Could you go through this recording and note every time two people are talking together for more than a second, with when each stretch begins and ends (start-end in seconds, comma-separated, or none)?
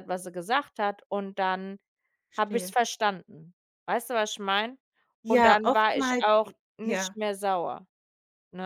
5.3-7.1